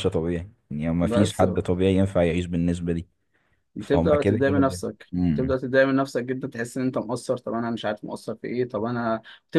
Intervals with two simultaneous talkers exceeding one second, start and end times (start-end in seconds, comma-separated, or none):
3.8-5.5